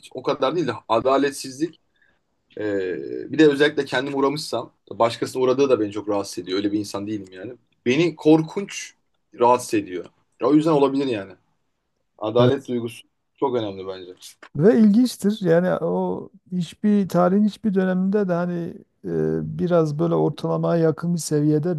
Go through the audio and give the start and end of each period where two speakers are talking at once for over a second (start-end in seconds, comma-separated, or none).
none